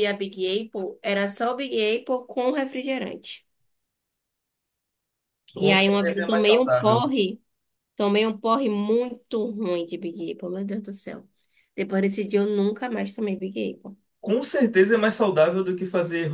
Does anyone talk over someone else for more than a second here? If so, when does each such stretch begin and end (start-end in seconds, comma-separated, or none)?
5.6-7.0